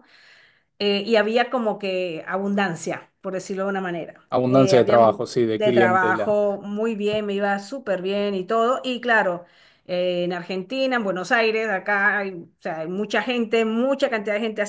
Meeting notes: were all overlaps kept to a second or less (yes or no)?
no